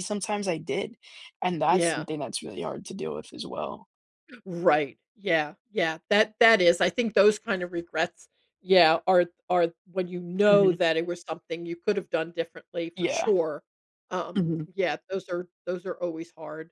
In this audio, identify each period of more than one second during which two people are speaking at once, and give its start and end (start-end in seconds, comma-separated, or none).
none